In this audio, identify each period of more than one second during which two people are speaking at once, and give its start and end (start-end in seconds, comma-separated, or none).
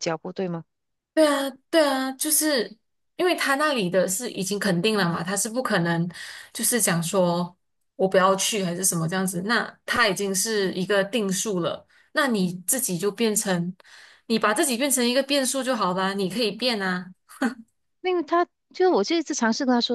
none